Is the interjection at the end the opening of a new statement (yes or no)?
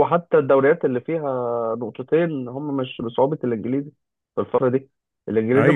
no